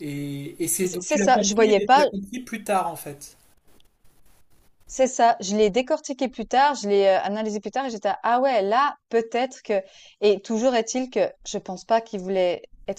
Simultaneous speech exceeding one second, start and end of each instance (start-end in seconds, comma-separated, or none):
0.8-2.1